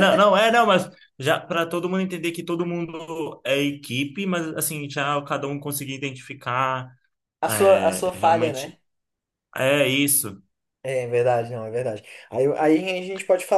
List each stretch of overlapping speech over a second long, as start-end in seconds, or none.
7.5-8.8